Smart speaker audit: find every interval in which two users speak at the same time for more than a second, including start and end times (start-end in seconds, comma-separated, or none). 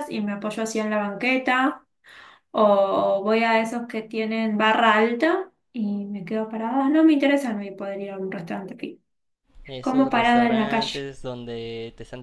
9.8-11.1